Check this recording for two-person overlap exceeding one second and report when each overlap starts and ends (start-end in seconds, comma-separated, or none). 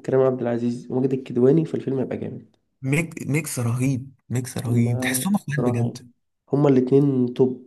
4.7-6.0